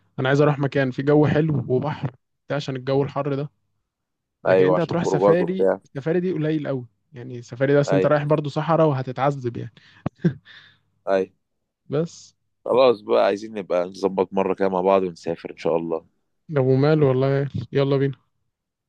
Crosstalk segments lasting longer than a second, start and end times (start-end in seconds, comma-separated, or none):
4.5-5.8